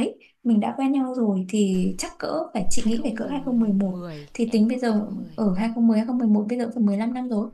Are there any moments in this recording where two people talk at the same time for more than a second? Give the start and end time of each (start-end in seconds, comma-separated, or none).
2.8-5.5